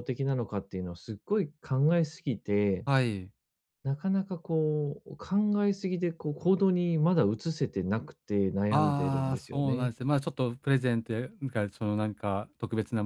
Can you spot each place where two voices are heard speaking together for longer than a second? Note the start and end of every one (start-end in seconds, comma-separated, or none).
8.7-9.9